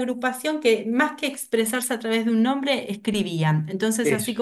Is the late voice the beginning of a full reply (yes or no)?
no